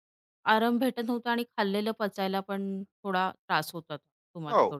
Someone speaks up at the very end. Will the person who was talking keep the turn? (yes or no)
no